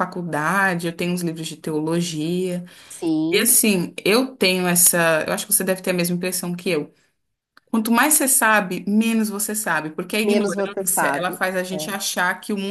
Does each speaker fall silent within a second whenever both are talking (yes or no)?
no